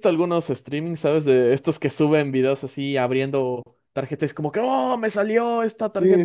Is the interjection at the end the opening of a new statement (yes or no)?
yes